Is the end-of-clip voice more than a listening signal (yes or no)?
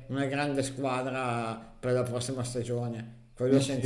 yes